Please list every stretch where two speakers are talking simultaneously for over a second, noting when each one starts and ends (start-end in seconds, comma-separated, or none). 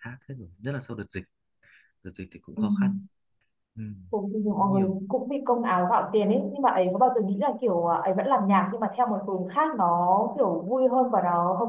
none